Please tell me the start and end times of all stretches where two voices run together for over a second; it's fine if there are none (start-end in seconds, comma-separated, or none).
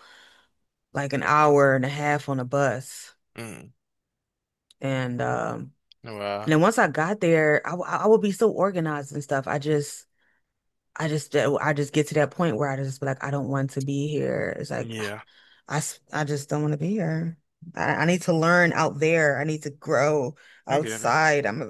none